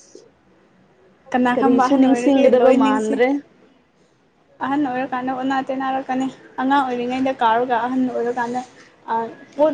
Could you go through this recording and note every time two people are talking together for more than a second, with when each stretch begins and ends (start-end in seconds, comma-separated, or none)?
1.5-3.2